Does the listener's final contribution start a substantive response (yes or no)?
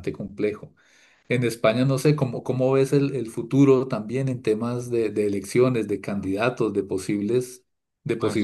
yes